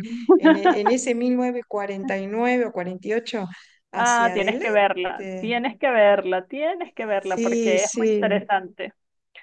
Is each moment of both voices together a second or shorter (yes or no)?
no